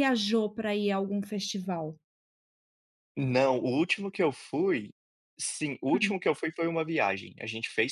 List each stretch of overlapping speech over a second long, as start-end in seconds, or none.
none